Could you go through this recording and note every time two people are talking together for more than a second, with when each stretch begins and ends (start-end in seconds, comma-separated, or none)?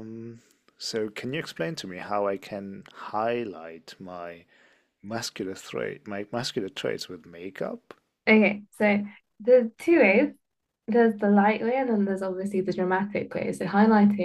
none